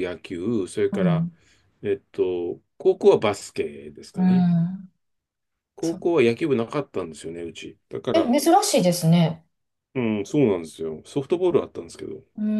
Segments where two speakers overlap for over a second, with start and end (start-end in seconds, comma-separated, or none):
none